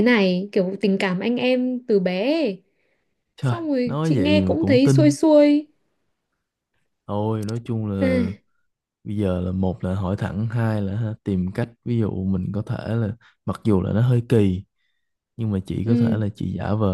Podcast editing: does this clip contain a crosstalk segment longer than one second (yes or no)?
yes